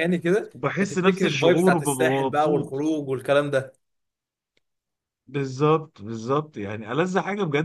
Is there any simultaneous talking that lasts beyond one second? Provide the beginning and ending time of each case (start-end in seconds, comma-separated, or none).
0.6-2.9